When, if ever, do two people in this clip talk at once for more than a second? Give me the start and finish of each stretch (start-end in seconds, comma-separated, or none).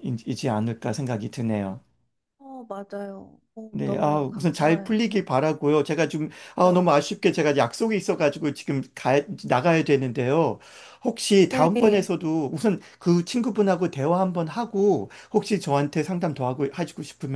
3.7-5.0